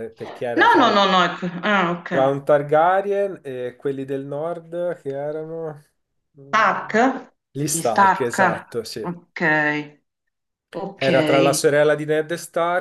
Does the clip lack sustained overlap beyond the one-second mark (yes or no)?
no